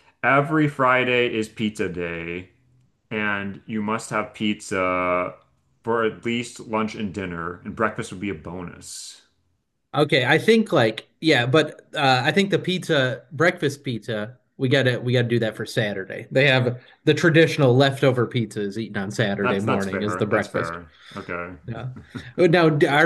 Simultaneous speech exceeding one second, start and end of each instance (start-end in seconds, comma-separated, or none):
19.4-20.8